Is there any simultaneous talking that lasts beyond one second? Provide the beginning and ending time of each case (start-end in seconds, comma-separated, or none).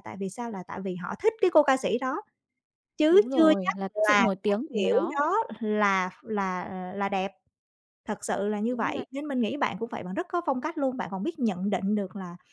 3.1-5.2